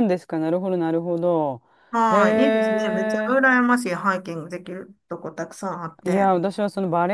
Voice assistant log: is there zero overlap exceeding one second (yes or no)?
no